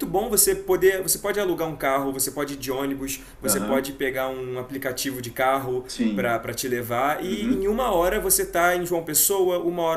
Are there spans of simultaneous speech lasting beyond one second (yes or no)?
no